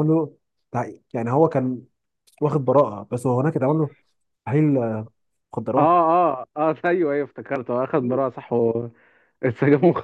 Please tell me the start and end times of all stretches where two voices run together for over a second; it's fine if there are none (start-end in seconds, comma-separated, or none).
none